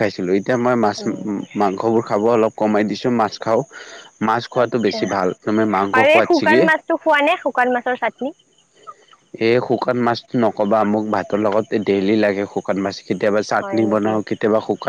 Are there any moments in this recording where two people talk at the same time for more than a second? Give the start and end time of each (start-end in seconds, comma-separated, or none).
none